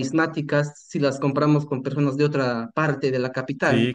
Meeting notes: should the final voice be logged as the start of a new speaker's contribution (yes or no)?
yes